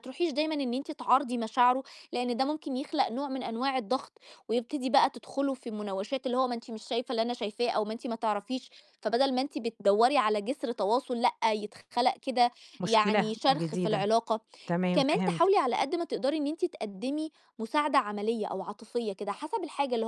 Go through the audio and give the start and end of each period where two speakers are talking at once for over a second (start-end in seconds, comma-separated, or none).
12.8-14.1